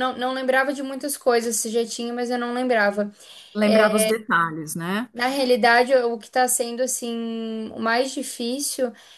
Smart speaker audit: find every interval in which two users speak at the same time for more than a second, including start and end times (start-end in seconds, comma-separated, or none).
none